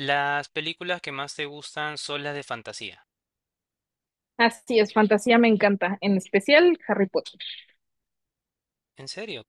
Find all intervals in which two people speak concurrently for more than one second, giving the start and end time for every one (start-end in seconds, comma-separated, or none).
none